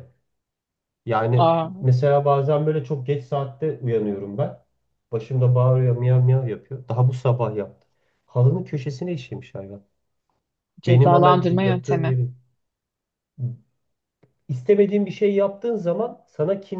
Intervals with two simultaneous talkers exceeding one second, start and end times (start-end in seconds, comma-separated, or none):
10.9-12.2